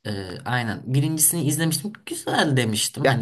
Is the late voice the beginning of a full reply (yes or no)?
no